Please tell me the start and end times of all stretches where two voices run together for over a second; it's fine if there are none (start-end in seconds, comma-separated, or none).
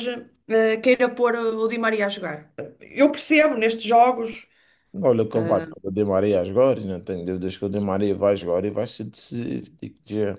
none